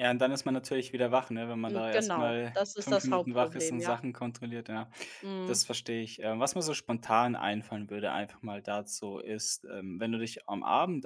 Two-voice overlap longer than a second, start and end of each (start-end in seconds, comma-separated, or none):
1.7-4.0